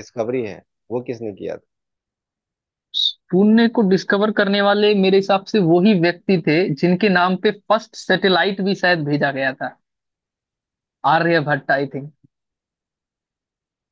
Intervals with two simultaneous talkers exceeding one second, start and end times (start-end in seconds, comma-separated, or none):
none